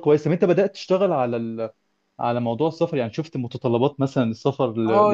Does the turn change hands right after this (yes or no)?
yes